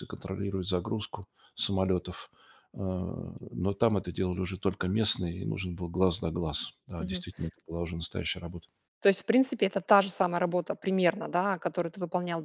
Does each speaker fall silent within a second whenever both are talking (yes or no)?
yes